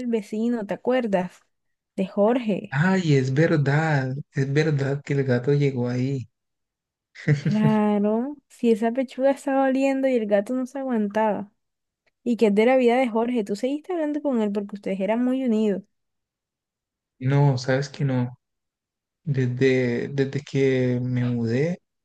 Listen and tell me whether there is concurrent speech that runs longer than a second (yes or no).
no